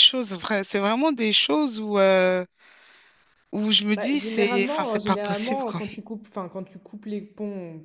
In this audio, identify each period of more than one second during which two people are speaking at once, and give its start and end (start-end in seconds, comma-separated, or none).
4.0-5.8